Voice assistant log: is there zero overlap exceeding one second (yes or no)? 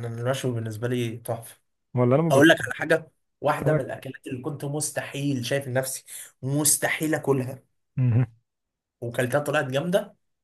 yes